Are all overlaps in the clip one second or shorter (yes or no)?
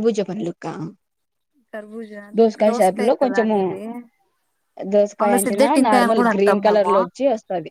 no